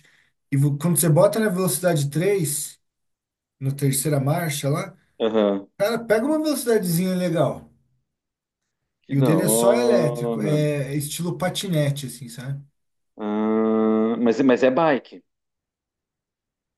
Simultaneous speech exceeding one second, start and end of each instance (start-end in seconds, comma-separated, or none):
9.1-10.5